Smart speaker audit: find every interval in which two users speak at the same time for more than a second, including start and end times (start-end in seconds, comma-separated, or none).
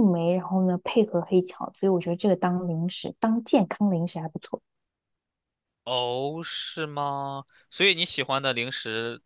none